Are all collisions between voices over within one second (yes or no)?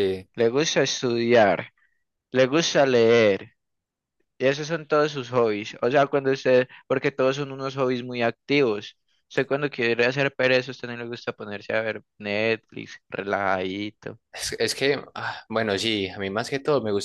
yes